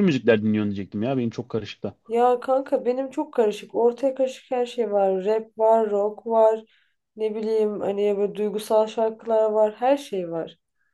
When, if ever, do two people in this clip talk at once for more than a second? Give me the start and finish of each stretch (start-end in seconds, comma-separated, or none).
none